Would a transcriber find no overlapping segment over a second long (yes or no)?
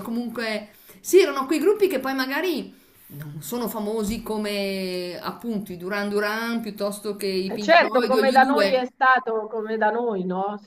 no